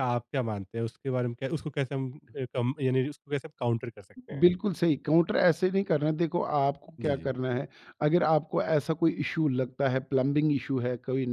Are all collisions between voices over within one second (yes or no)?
yes